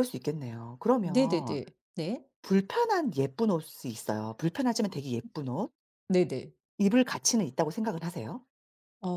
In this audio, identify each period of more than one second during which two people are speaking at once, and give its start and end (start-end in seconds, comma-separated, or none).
none